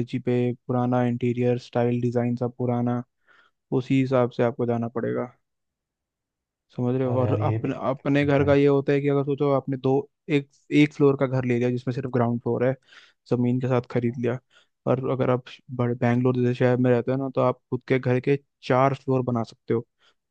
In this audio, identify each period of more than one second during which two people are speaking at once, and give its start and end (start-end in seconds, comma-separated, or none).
6.8-8.5